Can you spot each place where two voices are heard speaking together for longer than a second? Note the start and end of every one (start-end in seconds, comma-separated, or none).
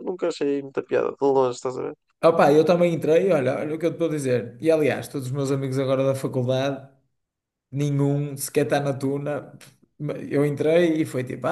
none